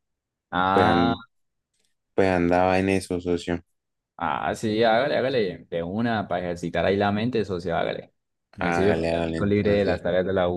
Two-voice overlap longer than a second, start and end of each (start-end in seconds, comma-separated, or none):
8.6-10.0